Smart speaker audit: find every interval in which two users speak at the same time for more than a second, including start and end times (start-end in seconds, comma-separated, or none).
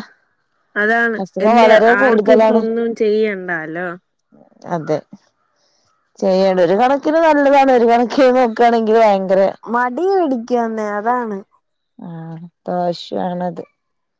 none